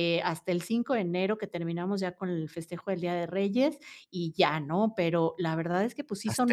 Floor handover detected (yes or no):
no